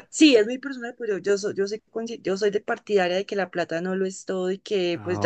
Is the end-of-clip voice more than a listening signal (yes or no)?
no